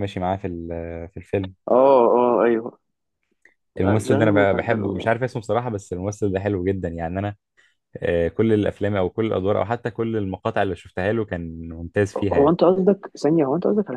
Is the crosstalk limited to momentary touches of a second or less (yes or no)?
no